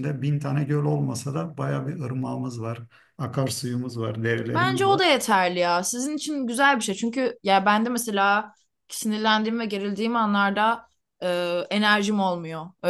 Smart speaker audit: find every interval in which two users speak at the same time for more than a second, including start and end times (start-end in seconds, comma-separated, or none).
none